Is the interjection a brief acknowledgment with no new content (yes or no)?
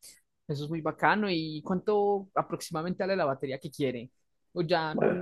no